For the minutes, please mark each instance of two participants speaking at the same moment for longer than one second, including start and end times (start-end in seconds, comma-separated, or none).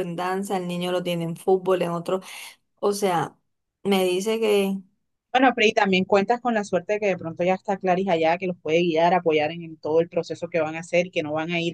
none